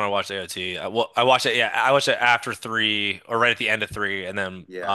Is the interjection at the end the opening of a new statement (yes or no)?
no